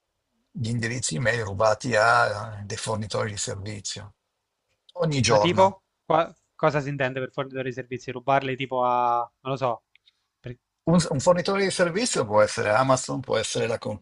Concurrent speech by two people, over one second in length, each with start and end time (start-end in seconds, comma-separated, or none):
none